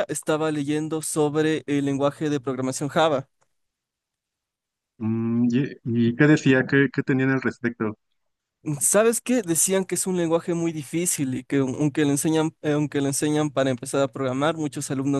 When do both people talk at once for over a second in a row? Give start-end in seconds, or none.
none